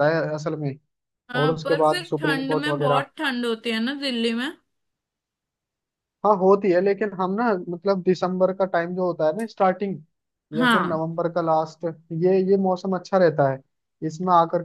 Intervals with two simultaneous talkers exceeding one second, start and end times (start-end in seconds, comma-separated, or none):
1.4-3.0